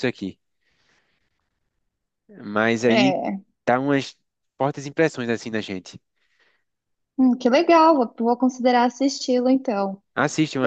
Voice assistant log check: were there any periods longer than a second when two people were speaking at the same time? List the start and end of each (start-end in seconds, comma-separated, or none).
none